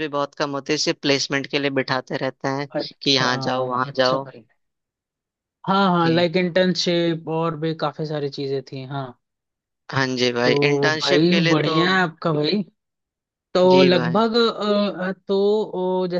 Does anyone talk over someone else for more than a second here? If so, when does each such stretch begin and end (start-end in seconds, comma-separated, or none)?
10.5-11.8